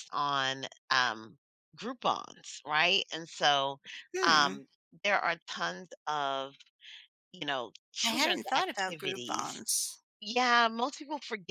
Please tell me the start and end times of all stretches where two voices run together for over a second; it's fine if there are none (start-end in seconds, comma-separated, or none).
8.0-9.6